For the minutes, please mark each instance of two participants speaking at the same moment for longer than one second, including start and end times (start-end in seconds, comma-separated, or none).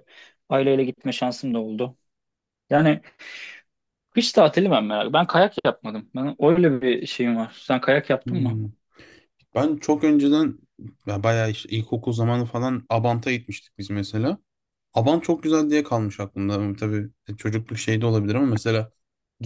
none